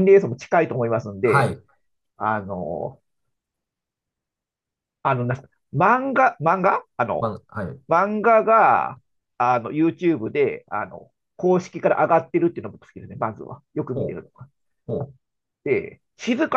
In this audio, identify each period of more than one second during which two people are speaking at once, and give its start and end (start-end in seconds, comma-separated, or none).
none